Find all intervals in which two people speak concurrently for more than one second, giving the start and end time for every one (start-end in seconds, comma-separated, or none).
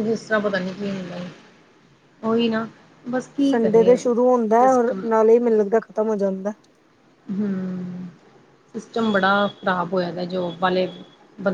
none